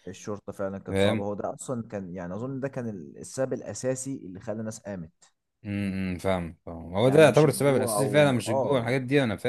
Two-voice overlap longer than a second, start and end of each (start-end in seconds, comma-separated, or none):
7.0-9.0